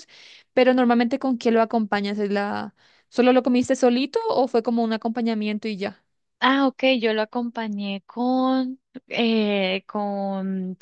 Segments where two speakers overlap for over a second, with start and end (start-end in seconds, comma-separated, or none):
none